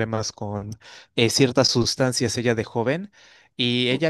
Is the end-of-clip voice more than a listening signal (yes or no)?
no